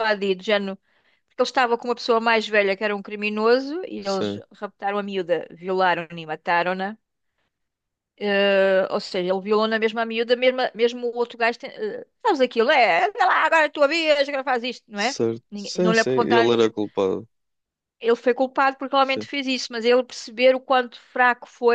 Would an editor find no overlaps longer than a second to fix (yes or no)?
no